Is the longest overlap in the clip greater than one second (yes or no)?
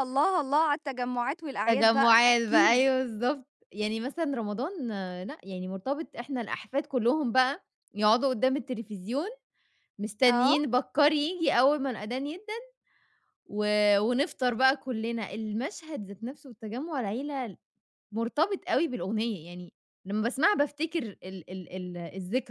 yes